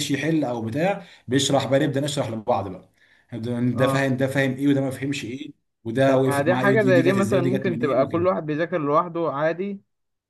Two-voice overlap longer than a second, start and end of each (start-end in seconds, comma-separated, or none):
6.1-8.3